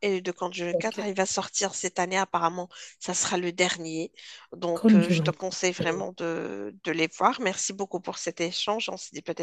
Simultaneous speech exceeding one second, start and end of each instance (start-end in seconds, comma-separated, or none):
4.7-6.1